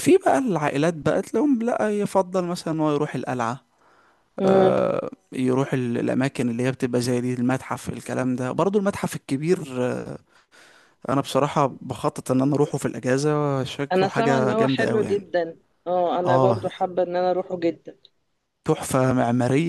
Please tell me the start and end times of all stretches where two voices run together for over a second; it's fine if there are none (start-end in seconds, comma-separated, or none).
13.9-15.3